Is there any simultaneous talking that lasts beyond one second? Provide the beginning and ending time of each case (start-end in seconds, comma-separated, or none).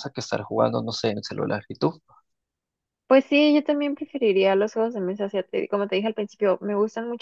none